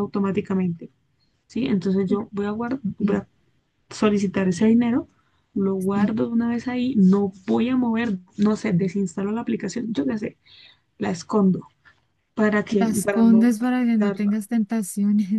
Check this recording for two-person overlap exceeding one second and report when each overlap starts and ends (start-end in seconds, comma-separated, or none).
12.8-14.4